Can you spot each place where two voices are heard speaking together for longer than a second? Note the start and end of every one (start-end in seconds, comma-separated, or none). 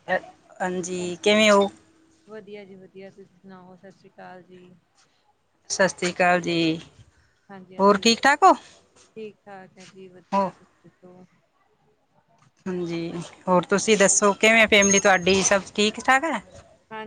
none